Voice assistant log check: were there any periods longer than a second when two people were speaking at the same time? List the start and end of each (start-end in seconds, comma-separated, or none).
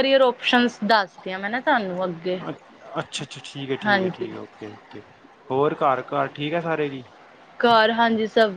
none